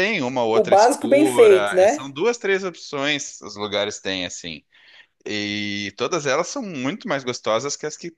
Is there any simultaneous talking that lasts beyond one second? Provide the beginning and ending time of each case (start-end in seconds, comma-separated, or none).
0.5-2.1